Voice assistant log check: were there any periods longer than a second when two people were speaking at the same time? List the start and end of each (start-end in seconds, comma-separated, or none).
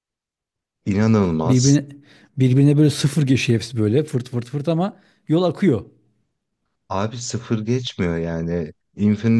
none